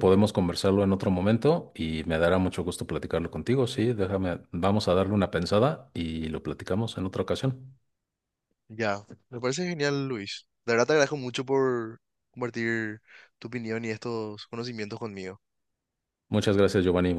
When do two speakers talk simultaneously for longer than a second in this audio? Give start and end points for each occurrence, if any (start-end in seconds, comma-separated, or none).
none